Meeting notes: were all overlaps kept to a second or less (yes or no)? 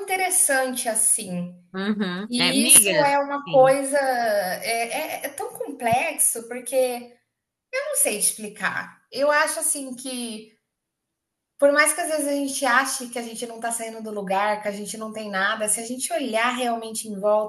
no